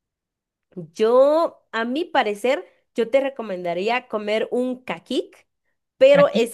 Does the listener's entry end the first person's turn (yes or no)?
no